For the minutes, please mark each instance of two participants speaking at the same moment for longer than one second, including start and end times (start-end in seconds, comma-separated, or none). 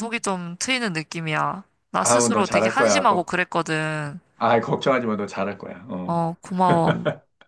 2.0-3.3